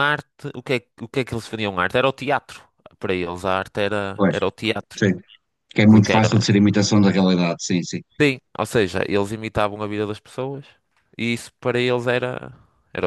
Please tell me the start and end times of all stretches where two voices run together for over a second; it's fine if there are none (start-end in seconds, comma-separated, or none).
none